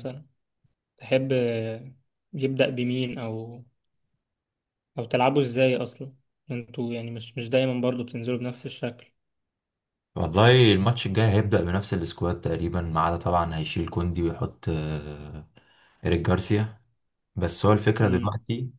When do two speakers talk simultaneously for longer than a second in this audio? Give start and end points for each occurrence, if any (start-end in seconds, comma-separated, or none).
none